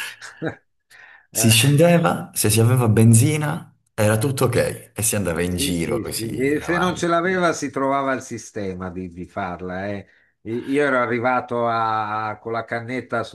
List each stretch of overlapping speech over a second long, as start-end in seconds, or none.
5.5-7.5